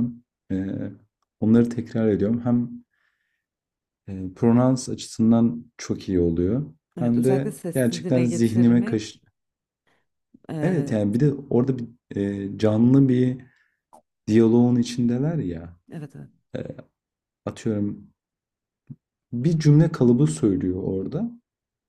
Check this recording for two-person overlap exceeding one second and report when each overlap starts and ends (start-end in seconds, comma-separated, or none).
7.0-9.2